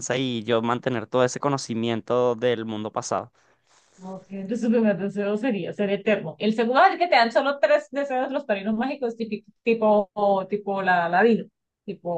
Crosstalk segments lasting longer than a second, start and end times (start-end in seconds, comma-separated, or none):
none